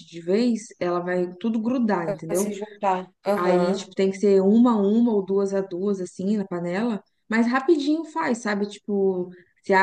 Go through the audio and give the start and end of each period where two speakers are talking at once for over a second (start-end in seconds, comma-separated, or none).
none